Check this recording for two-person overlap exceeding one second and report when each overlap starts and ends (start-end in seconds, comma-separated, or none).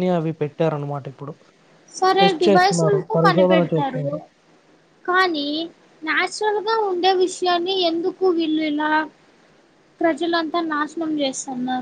2.2-4.0